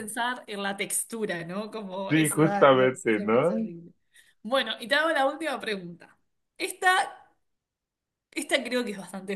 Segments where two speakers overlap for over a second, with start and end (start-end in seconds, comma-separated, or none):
2.1-3.7